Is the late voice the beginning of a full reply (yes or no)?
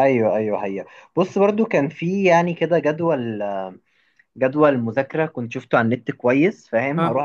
no